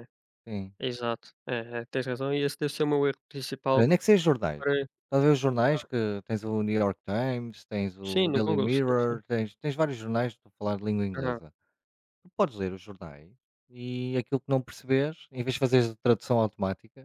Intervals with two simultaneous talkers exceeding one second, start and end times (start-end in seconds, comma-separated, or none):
8.0-9.2